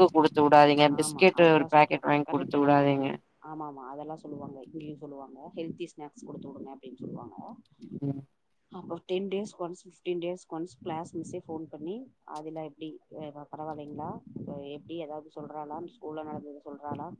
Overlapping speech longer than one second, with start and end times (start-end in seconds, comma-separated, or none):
1.0-3.0